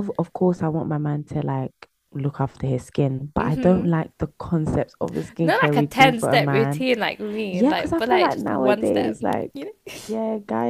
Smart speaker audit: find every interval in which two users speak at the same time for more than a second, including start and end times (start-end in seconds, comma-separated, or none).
5.4-6.8, 7.5-9.5